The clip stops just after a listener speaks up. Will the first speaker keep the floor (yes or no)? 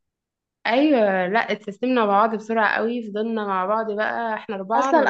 no